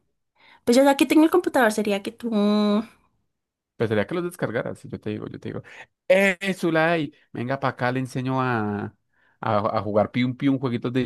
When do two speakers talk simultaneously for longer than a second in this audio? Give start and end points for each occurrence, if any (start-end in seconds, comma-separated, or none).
none